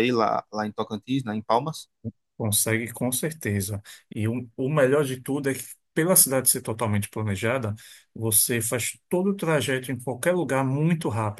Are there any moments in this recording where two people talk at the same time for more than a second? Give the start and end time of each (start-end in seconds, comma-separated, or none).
none